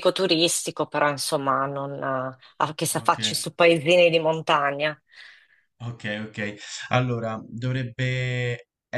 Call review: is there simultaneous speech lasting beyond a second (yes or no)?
no